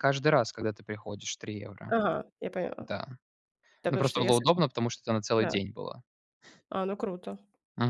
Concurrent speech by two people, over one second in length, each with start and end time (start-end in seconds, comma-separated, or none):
none